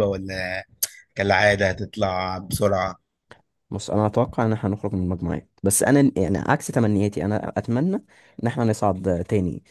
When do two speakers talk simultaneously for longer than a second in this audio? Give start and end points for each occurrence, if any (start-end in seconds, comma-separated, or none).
none